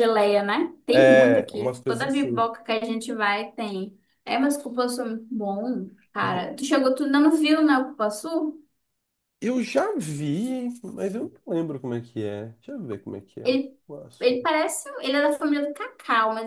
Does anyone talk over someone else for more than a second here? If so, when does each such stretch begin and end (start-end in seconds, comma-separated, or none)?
0.9-2.5